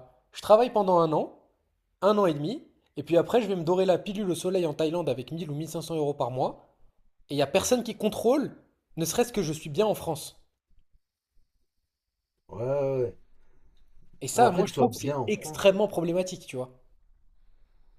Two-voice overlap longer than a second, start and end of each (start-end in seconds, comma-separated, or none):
14.3-15.7